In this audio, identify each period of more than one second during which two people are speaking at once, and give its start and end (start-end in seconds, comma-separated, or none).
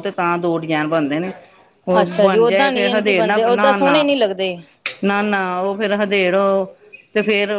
2.0-4.0